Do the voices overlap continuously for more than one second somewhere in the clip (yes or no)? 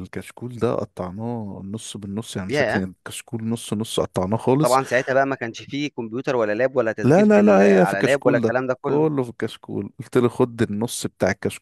yes